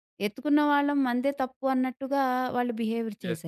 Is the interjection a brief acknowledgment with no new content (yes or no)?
no